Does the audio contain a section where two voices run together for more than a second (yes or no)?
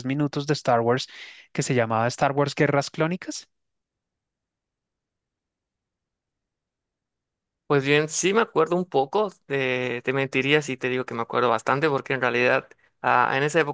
no